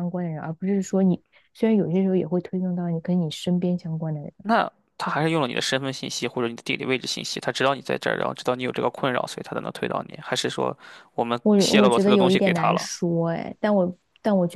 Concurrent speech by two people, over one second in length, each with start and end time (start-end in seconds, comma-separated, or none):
11.4-12.9